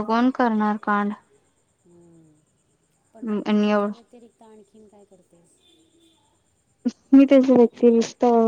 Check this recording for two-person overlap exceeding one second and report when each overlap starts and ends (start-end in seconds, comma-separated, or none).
none